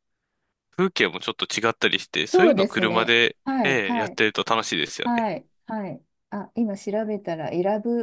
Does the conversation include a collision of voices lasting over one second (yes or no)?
yes